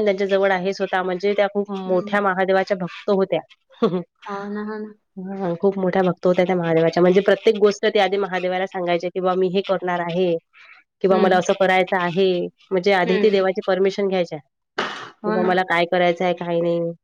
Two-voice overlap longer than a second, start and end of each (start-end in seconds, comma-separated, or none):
none